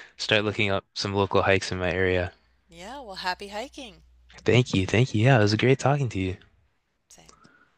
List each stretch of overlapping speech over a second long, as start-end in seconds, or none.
none